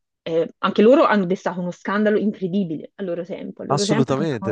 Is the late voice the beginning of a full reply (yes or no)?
yes